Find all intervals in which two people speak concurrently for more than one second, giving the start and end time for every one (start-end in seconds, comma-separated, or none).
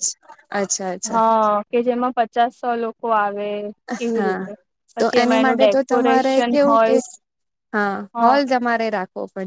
5.0-7.0